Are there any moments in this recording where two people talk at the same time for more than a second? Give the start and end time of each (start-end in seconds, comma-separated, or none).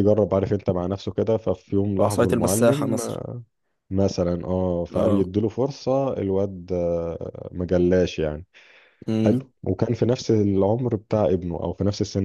2.0-3.2